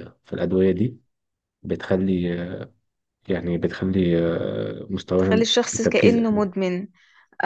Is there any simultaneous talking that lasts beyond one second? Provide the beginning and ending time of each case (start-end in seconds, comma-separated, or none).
5.2-6.5